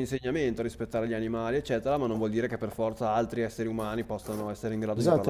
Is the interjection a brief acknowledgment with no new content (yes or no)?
no